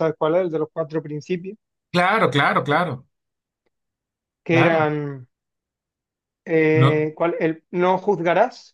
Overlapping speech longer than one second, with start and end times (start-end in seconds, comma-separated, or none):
none